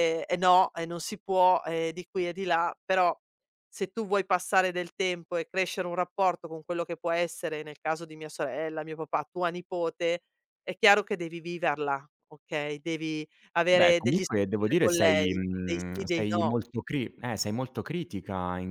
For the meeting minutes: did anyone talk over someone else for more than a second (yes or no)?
yes